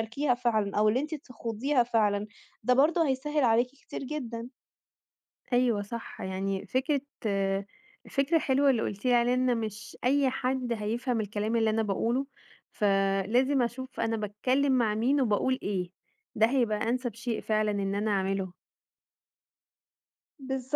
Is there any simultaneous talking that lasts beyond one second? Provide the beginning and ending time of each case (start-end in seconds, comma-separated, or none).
none